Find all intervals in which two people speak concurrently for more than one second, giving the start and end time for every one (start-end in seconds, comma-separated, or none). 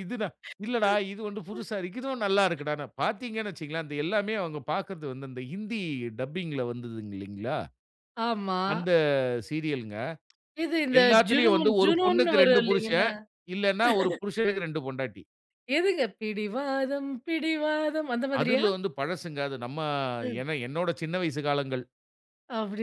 11.0-13.1